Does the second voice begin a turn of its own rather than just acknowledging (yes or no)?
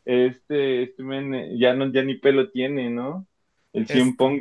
no